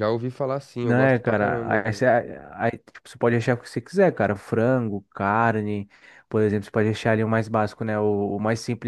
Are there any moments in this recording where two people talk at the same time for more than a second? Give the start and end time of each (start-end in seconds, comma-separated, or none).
0.8-2.1